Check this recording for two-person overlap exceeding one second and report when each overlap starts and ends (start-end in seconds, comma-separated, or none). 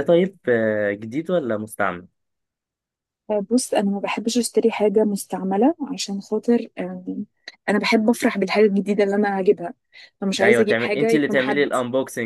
10.4-11.7